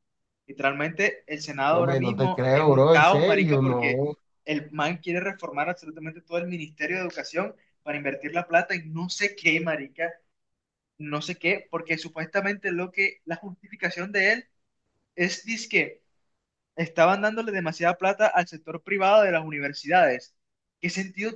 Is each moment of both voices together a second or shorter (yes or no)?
no